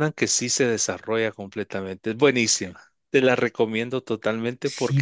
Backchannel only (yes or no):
no